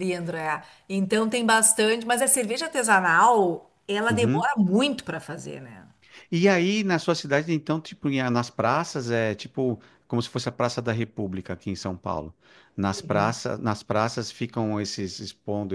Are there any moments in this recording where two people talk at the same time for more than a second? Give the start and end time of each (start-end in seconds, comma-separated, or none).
none